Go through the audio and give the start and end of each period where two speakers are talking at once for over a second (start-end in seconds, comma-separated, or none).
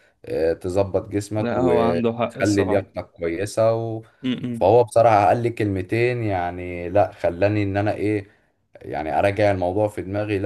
1.4-2.9